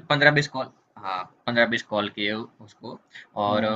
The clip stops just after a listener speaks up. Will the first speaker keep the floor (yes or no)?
yes